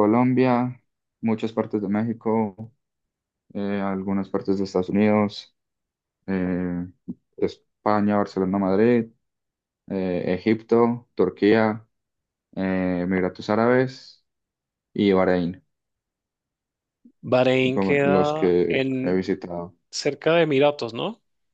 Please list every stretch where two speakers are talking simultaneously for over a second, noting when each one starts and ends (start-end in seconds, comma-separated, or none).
17.7-19.2